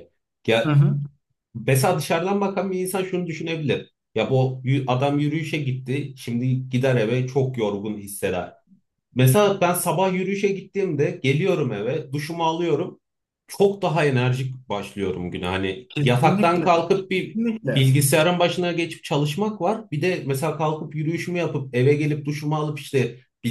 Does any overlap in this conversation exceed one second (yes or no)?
yes